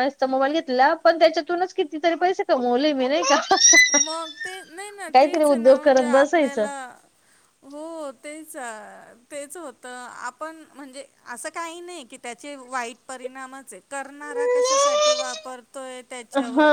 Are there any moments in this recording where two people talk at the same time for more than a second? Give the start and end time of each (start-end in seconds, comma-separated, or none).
5.1-6.7